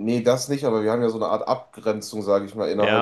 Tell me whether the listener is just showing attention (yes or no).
no